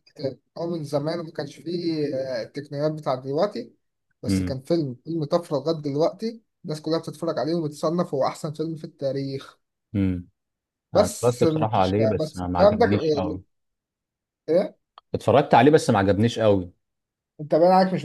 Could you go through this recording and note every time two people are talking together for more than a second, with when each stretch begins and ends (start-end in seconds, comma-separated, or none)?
10.9-12.8